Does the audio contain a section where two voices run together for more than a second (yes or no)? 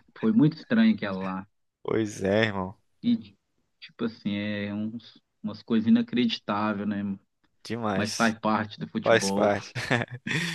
no